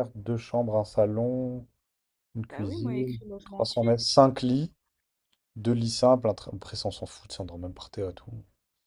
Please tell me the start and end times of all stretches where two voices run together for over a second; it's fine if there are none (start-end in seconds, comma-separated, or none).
2.5-4.0